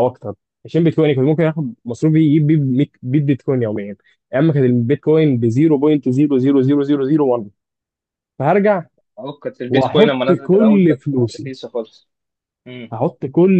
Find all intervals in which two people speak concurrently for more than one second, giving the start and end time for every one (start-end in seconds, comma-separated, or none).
9.7-11.5